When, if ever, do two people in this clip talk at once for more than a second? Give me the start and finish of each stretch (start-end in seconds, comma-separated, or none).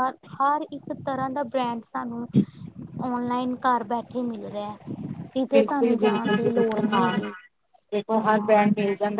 5.5-7.2